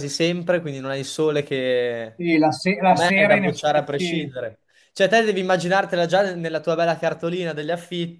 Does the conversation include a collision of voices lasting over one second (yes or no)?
yes